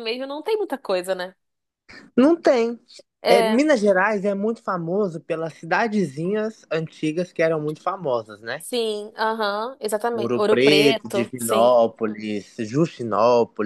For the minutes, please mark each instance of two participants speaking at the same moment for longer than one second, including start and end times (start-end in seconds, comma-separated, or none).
10.1-11.7